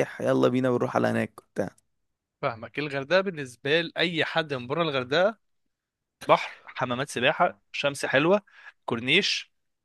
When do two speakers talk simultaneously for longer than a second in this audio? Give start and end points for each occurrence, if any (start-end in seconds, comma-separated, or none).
none